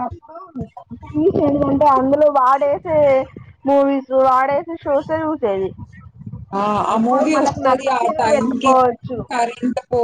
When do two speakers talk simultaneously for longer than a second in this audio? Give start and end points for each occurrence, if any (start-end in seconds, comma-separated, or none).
7.0-8.7